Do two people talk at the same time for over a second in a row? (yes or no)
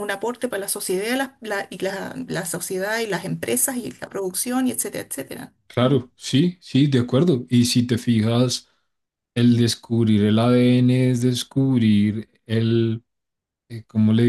no